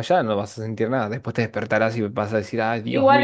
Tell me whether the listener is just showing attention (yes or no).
no